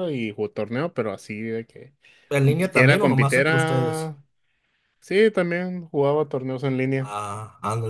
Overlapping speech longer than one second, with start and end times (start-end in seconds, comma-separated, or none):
2.4-4.1